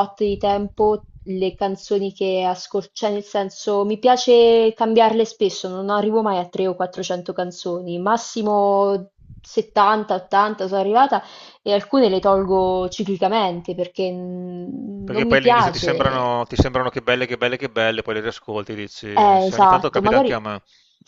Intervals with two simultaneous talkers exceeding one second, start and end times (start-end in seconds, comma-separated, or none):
15.0-16.4, 19.1-20.4